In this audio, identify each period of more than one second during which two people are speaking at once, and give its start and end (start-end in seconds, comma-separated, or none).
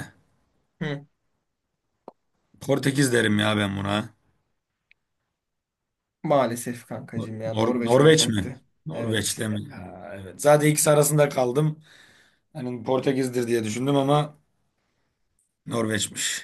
7.5-9.4